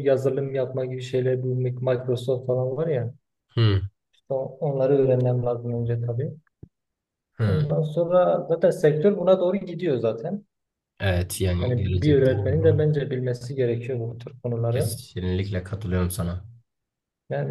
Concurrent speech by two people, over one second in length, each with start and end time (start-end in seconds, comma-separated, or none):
11.6-12.9